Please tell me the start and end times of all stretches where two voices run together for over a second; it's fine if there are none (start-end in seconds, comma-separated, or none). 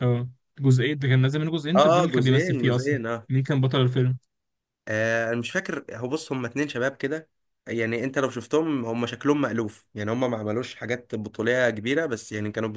1.8-3.3